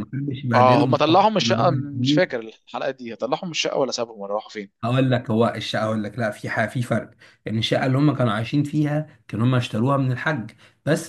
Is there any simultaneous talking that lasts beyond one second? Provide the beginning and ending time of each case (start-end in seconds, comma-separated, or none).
0.5-2.2